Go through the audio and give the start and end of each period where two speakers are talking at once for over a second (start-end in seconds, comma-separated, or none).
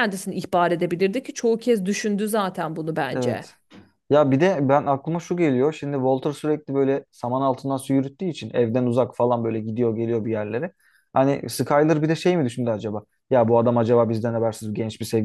none